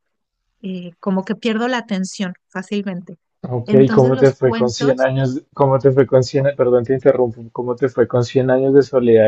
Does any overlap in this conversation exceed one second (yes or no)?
yes